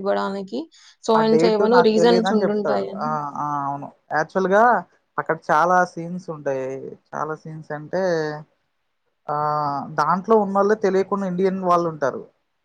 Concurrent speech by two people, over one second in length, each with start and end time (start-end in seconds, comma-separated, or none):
1.2-3.1